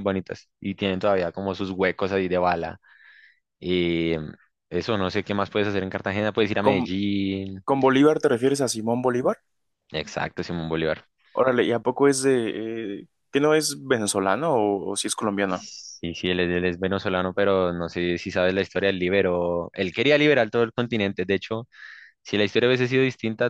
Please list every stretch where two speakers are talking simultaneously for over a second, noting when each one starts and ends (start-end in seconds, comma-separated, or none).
none